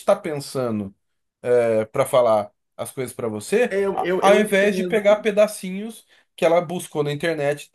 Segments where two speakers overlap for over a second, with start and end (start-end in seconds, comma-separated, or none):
3.7-5.2